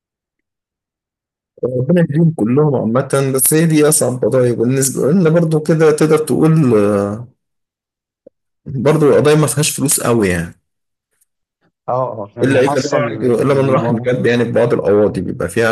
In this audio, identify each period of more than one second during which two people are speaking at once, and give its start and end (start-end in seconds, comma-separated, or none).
12.4-14.1